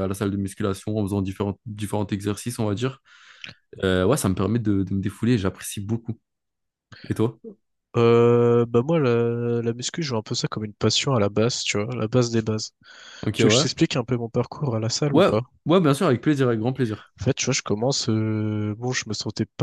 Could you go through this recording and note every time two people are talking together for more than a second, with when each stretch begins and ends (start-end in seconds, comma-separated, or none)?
none